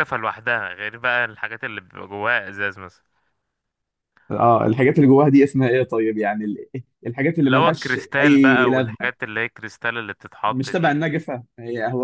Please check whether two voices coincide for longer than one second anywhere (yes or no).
yes